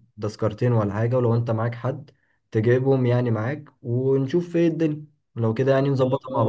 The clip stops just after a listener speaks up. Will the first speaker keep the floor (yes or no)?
no